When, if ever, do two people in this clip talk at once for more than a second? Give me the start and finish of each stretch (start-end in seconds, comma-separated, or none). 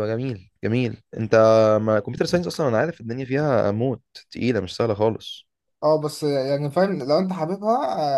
none